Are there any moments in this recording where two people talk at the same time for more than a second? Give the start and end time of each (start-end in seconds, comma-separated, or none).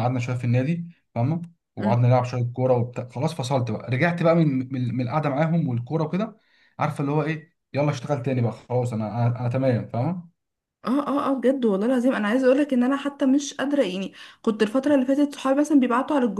none